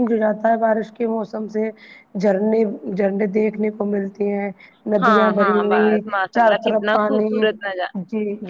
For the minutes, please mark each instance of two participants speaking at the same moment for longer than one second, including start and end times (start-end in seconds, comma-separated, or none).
5.0-7.5